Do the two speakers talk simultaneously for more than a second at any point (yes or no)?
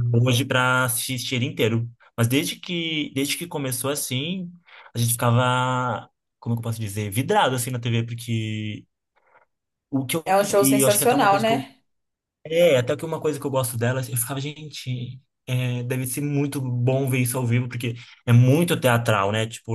yes